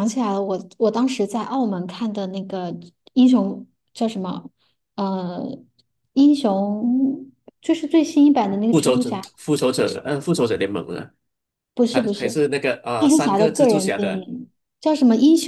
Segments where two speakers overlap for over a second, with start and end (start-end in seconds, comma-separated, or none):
13.0-14.3